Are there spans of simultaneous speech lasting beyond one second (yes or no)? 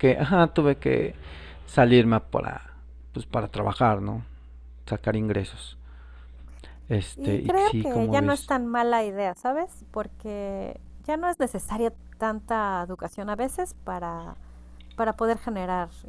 yes